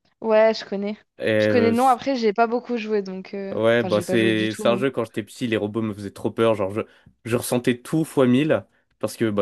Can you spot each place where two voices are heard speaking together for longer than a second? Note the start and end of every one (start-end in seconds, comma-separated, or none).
3.5-4.9